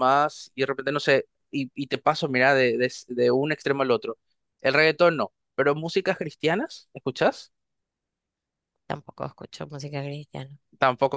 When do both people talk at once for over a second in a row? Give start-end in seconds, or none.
none